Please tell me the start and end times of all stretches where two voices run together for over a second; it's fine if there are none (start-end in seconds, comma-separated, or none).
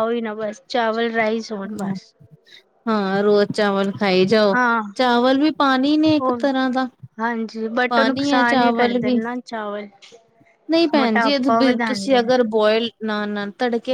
7.9-9.2, 10.9-12.4